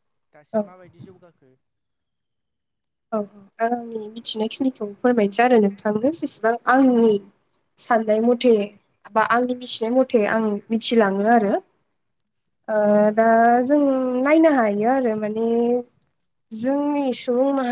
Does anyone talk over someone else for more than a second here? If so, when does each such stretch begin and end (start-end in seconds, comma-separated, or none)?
none